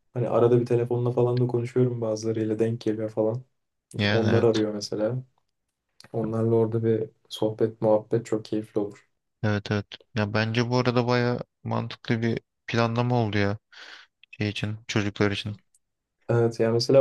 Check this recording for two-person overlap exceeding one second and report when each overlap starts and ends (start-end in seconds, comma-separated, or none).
none